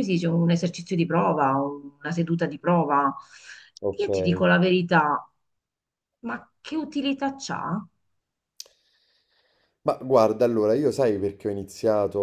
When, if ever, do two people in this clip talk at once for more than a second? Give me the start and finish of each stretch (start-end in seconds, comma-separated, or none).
none